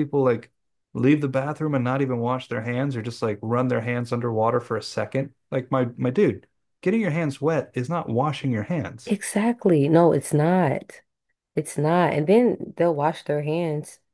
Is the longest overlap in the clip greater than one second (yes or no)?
no